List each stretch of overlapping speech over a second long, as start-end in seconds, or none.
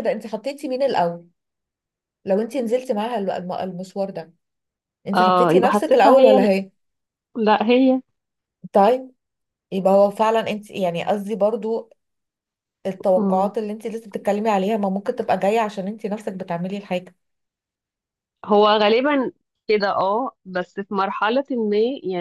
5.1-6.5